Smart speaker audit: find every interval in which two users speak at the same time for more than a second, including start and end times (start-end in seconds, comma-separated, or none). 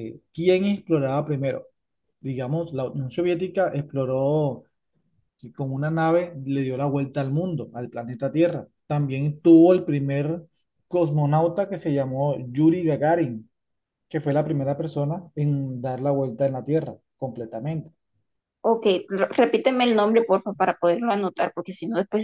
none